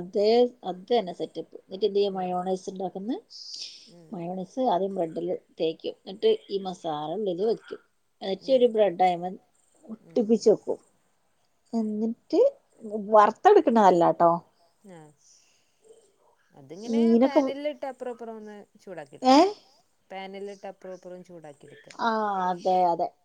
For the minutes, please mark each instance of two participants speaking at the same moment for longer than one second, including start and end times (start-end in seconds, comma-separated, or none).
none